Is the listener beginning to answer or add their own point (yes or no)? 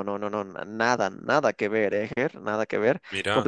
no